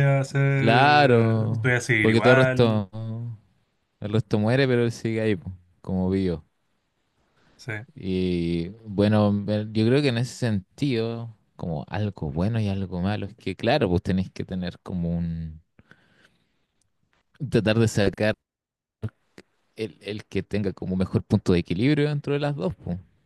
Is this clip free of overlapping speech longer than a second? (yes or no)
no